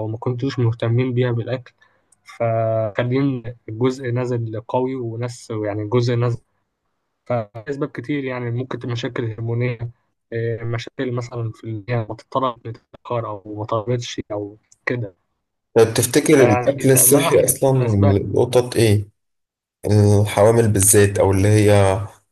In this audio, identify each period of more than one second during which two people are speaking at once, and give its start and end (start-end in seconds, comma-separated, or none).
16.3-18.1